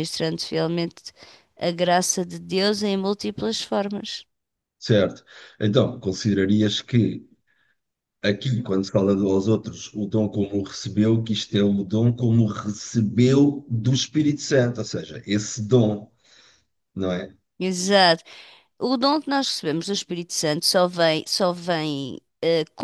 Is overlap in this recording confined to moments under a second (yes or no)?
yes